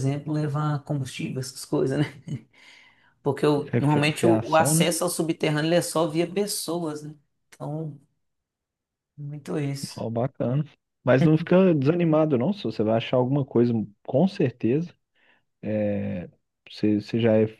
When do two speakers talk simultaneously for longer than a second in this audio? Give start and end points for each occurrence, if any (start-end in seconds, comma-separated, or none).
3.7-4.9